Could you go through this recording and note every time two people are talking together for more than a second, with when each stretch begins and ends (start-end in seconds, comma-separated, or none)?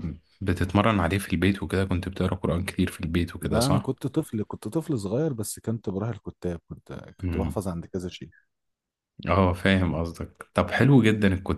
none